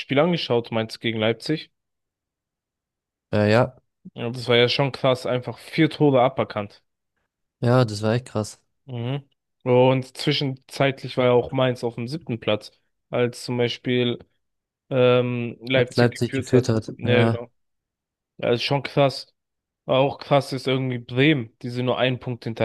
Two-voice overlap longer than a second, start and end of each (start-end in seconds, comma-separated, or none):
15.8-17.4